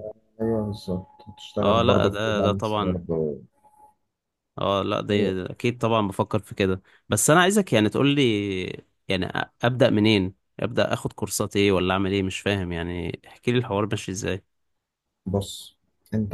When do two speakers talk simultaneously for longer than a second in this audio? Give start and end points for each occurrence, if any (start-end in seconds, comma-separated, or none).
1.6-3.0